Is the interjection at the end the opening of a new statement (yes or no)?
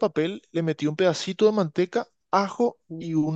no